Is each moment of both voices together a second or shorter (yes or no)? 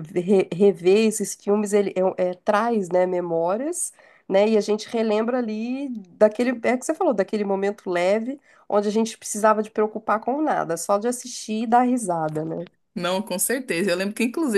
yes